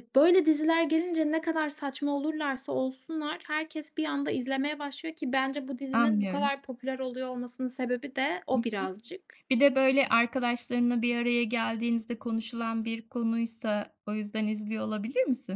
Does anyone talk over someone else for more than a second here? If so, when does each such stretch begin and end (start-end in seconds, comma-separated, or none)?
none